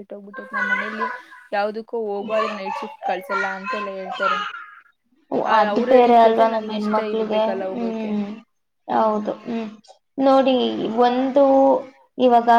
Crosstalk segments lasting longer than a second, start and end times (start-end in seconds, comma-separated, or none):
5.6-8.1